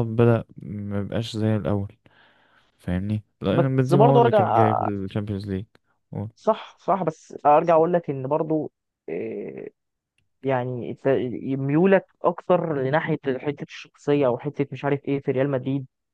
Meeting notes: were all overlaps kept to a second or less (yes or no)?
no